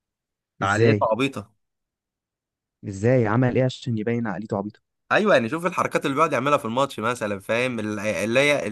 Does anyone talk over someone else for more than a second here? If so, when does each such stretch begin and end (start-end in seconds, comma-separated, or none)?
none